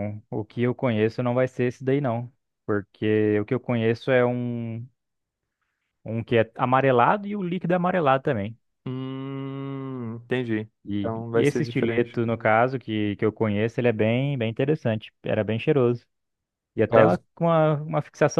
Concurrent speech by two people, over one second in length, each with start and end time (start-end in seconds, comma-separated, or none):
10.8-12.2